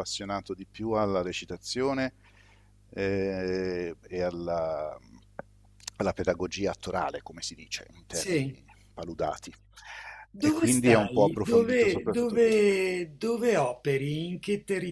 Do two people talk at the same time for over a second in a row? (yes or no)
yes